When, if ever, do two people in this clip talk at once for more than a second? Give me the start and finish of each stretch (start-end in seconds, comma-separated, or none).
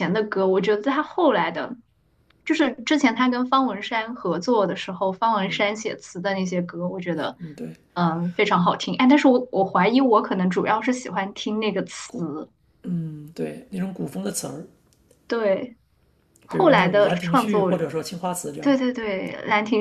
16.5-17.7